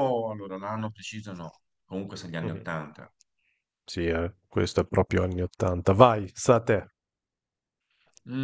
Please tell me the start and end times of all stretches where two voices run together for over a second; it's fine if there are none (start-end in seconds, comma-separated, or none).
none